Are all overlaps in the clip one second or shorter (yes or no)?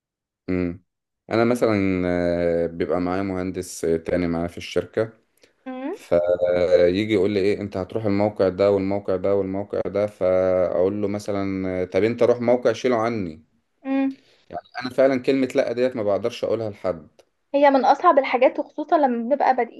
yes